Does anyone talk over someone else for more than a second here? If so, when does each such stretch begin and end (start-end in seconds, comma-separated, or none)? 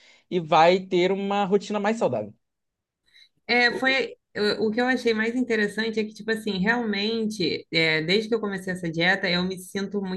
none